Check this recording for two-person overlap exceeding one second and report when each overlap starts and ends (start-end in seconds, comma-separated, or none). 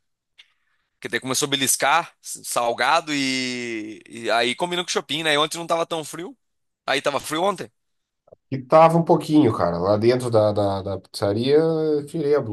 none